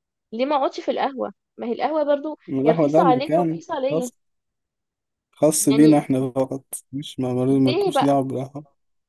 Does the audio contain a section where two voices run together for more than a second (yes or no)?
yes